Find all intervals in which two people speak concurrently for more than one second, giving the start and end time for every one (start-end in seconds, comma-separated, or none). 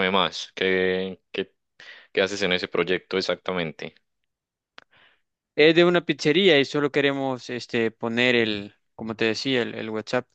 none